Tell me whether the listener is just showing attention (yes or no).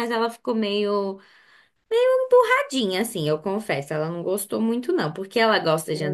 yes